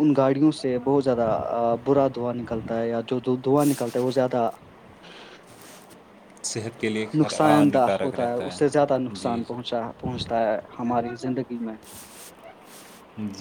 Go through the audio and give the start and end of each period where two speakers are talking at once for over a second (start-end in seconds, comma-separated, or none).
7.2-9.8